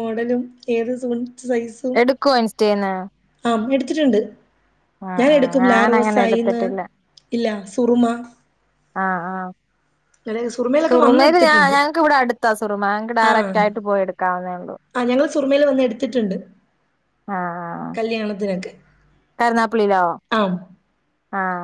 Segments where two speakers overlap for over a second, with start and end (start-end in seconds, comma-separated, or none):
5.2-6.6